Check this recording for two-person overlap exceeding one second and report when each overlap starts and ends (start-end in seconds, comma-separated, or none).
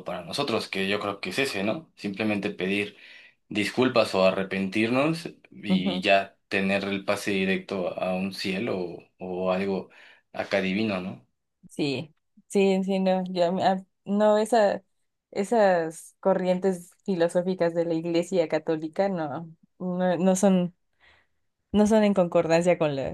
none